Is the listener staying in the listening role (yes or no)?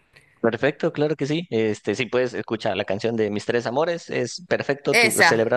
yes